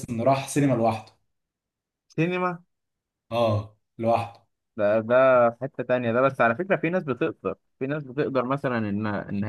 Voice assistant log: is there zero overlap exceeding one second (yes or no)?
yes